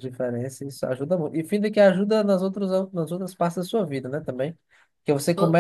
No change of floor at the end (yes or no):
yes